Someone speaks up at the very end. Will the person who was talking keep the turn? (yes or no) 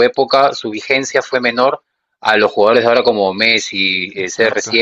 yes